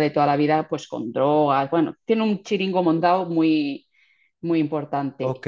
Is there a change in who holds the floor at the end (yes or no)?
no